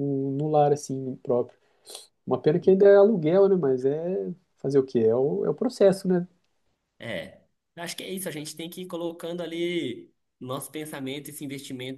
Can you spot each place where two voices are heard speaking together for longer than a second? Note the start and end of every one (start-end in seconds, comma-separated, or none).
none